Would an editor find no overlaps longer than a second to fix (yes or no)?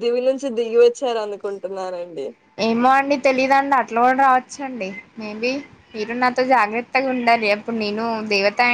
yes